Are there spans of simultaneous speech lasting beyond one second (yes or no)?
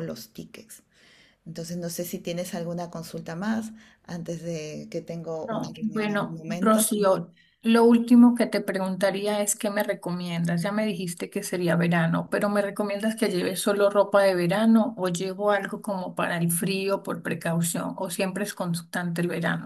yes